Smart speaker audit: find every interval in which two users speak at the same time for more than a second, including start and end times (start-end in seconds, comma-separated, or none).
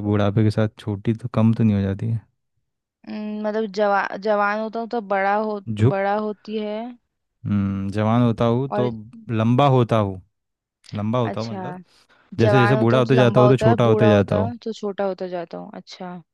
12.4-14.5